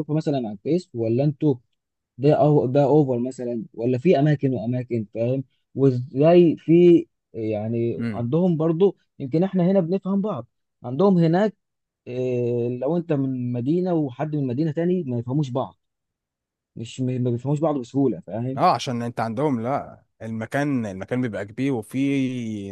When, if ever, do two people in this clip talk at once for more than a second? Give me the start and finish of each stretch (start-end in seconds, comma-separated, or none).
none